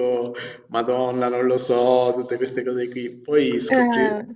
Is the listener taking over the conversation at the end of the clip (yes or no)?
no